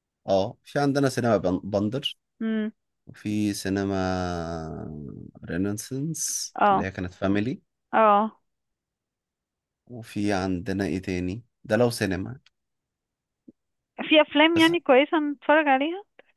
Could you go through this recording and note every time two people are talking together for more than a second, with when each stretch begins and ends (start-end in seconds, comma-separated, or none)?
none